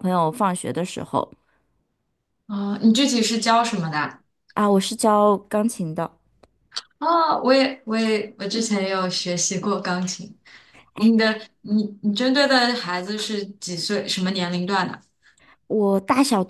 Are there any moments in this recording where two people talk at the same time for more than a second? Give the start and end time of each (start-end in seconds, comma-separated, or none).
none